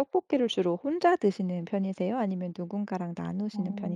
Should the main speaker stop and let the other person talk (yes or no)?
yes